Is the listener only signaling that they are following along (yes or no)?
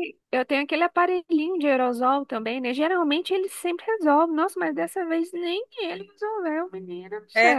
no